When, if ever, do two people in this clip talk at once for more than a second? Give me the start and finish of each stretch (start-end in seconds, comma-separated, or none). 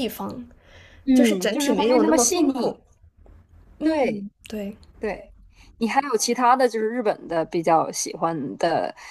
1.1-2.5